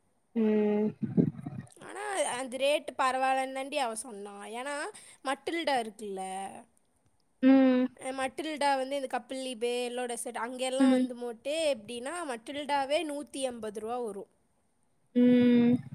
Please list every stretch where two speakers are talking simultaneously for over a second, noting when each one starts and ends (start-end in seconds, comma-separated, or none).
none